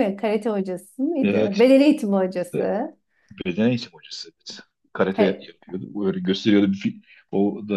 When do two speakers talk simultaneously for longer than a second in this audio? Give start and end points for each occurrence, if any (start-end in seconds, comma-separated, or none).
none